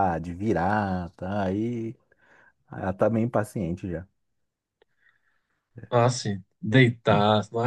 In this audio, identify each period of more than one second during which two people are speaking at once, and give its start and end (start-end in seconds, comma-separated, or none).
none